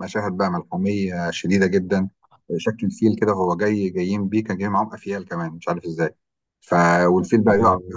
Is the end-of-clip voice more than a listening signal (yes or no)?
no